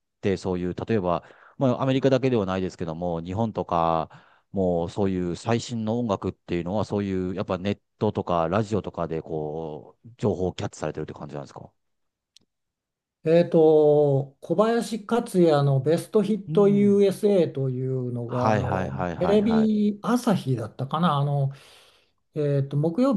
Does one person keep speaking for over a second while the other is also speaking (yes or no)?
yes